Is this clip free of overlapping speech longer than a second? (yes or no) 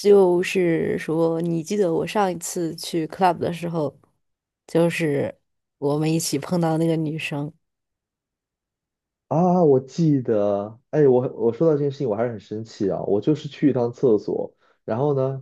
yes